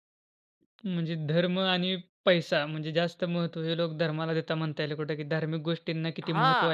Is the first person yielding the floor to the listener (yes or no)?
yes